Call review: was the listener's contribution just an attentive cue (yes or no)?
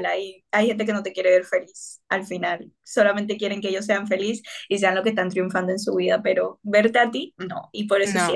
yes